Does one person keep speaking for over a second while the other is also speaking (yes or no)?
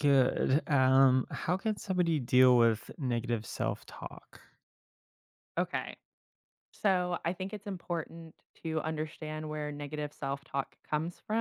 no